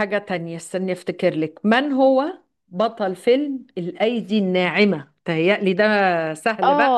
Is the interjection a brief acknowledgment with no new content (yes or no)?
no